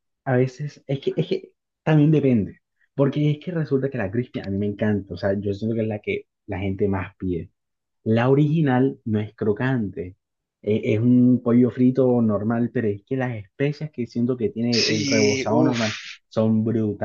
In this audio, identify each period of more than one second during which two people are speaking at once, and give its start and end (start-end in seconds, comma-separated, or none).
14.7-16.2